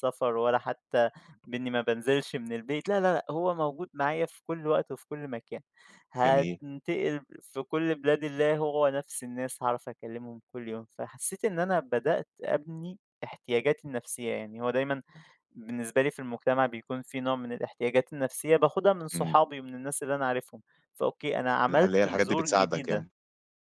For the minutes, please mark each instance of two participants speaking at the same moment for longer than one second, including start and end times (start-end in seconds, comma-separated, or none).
21.7-23.1